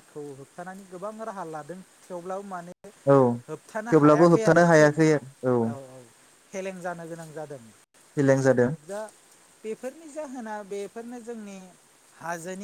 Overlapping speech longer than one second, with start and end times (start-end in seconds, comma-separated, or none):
3.5-4.9